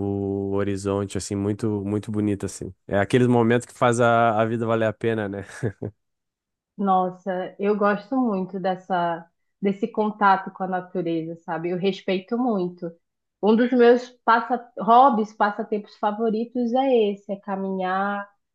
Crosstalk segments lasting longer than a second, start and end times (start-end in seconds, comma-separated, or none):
none